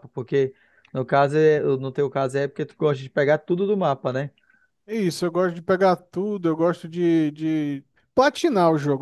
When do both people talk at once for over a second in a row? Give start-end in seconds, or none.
none